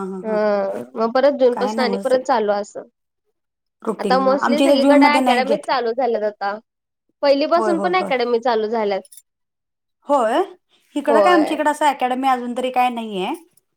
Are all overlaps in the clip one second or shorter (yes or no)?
no